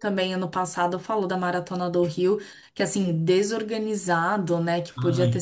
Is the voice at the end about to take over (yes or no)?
no